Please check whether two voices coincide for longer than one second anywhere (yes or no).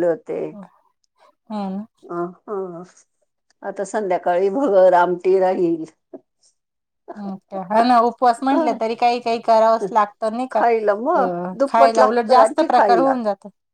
yes